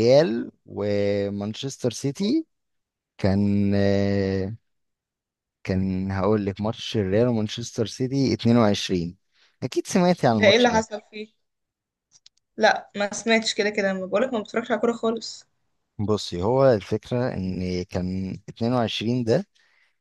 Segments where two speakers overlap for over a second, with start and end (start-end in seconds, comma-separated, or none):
none